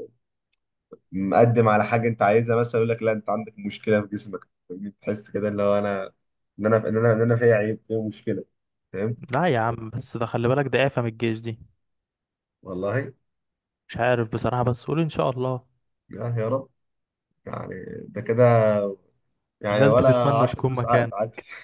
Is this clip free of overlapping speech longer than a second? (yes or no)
no